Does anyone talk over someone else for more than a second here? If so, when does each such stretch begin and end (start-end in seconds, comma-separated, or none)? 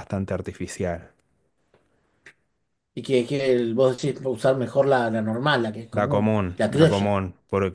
5.9-7.2